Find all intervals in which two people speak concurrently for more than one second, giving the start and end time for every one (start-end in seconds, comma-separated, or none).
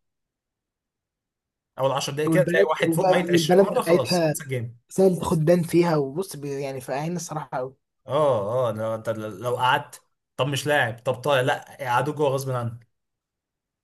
2.2-4.3